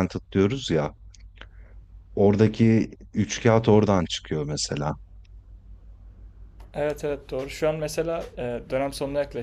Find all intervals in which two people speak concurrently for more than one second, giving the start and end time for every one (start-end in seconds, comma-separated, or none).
none